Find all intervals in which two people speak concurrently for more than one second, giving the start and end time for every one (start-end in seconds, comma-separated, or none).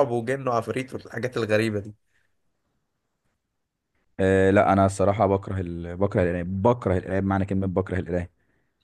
none